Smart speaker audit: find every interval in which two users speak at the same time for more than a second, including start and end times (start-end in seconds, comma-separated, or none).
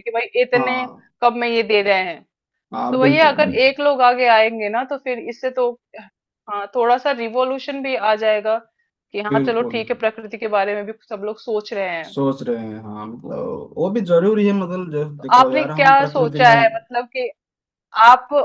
15.2-16.5